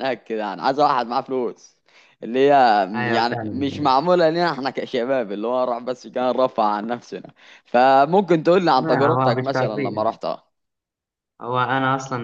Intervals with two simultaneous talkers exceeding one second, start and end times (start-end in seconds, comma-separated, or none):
8.7-10.0